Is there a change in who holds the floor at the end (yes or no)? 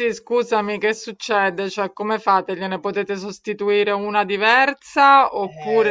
yes